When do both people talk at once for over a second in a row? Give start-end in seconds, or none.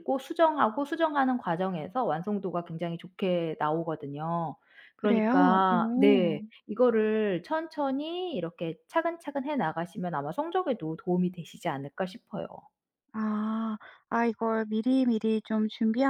5.0-6.4